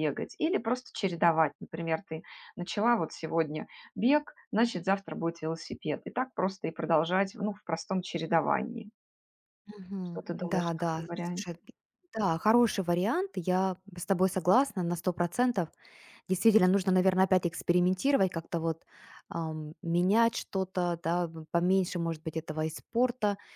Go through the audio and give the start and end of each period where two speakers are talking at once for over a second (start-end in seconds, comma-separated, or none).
10.0-11.6